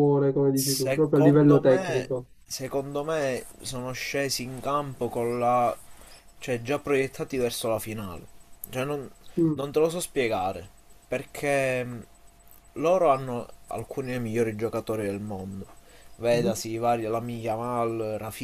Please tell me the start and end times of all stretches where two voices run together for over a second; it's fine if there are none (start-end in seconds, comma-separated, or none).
0.6-2.3